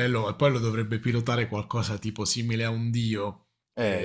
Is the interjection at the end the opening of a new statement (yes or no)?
yes